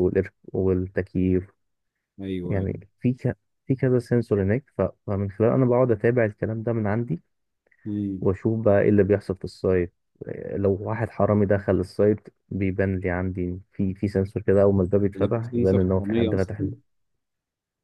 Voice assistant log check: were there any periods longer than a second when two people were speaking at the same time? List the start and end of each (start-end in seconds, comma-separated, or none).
15.1-16.7